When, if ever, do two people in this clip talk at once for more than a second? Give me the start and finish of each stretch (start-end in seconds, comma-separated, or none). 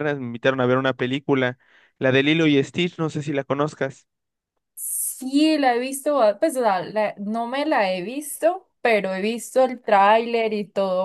none